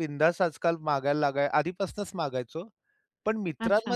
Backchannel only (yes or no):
yes